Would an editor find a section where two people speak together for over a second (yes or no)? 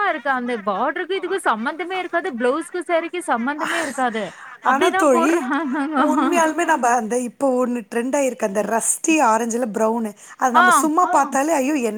no